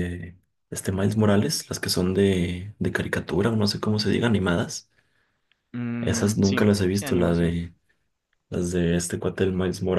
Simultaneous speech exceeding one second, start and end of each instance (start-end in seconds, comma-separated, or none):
6.0-7.6